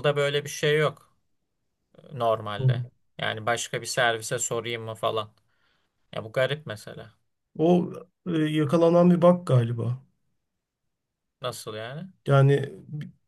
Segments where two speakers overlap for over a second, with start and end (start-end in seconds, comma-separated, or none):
none